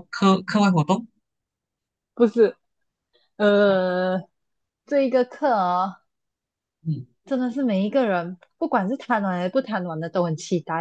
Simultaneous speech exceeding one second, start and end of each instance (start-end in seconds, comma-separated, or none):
none